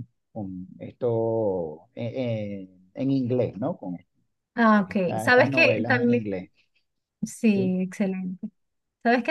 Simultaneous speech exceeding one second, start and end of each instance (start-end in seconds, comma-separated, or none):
4.7-6.2